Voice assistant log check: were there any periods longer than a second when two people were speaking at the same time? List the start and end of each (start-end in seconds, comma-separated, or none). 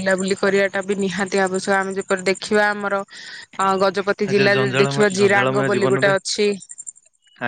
4.3-6.1